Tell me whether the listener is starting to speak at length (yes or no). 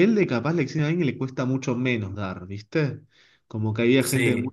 no